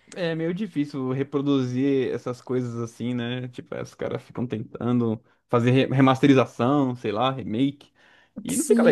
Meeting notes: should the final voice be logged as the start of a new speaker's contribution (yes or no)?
yes